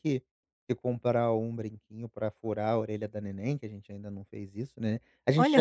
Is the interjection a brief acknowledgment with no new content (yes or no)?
yes